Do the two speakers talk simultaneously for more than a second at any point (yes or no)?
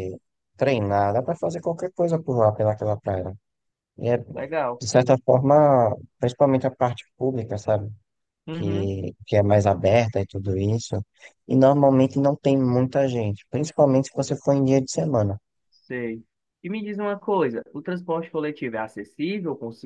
no